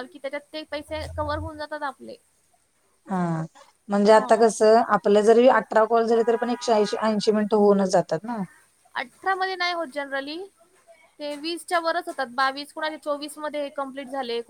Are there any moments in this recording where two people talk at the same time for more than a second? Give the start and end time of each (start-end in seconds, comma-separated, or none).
none